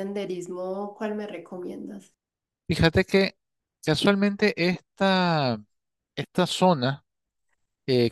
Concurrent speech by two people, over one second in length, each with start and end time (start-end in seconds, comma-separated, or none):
none